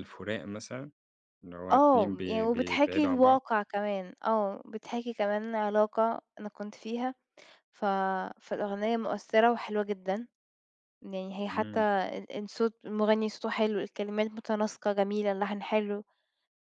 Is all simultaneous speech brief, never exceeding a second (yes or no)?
no